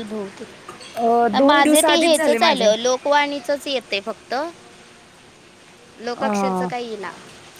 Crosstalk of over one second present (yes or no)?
yes